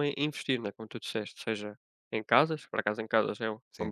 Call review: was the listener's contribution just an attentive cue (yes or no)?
yes